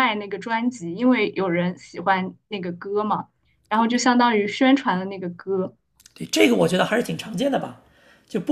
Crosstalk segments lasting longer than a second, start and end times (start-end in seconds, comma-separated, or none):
none